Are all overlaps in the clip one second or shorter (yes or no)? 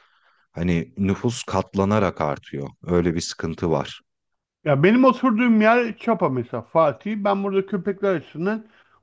yes